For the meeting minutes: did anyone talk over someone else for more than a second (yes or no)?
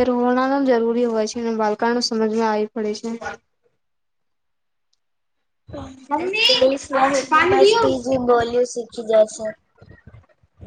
yes